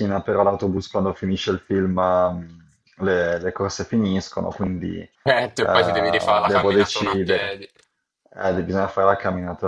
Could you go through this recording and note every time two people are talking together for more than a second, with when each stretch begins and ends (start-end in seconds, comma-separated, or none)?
6.4-7.6